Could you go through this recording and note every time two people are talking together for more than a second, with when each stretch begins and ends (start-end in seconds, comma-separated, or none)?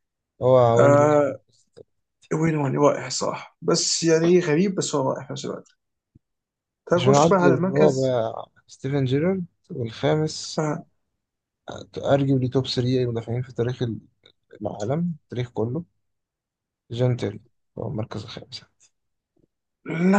7.0-8.2